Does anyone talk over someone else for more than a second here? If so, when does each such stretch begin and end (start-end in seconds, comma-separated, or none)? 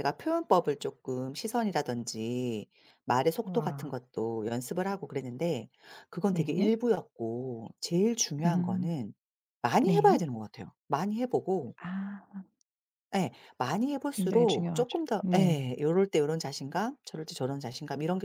14.1-15.6